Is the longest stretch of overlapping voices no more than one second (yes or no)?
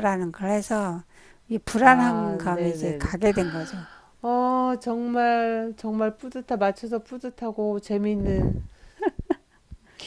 no